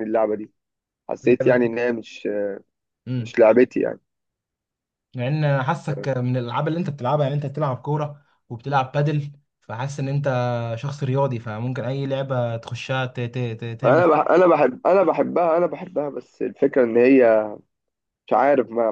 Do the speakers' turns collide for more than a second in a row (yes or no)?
no